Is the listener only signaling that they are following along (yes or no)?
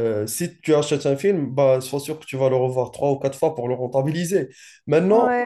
yes